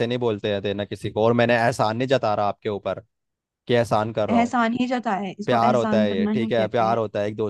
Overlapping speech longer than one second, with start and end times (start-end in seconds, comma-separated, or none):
5.5-7.0